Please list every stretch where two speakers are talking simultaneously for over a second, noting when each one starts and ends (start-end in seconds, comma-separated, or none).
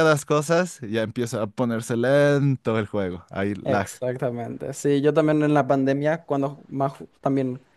none